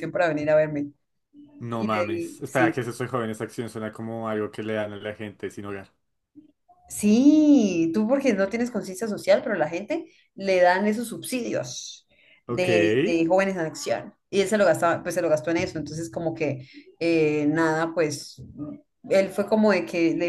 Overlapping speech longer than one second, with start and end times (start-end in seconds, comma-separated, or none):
1.7-3.0